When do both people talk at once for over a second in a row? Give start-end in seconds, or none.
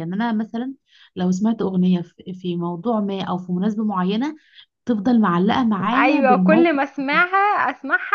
5.9-7.2